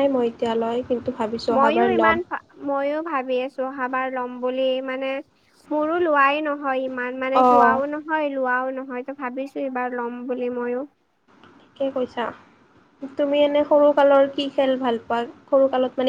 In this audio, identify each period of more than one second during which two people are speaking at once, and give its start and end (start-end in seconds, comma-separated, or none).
none